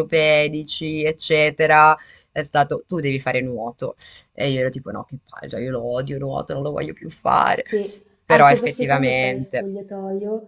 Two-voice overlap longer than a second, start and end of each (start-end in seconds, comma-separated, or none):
8.2-9.7